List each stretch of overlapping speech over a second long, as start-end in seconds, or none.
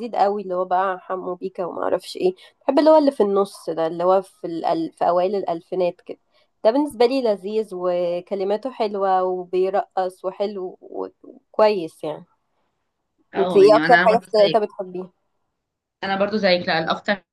13.4-14.6